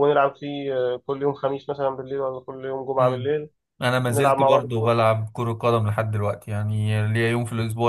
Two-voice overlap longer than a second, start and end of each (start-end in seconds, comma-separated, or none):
none